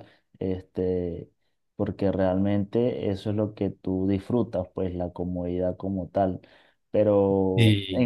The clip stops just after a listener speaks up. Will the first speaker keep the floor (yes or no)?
yes